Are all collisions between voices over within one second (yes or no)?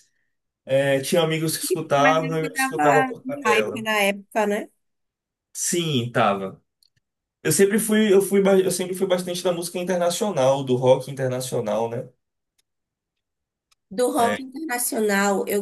no